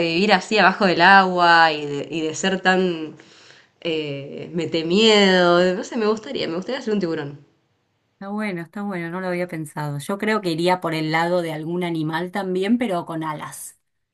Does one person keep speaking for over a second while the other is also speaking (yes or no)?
no